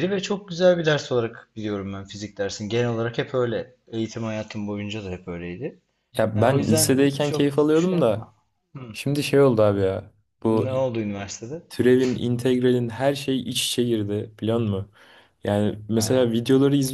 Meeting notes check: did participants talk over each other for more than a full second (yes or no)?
yes